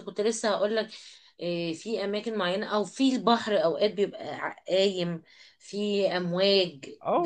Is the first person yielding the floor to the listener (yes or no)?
yes